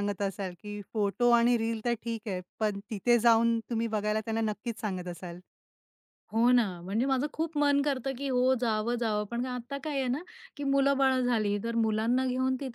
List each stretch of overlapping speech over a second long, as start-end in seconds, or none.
none